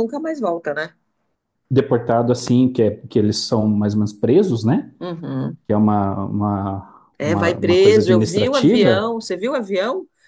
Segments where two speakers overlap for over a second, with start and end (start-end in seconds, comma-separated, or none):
7.2-9.2